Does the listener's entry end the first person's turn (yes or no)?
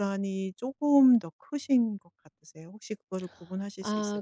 yes